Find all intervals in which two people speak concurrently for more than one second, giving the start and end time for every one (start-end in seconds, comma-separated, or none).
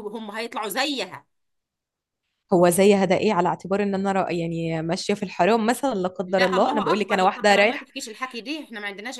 6.3-7.9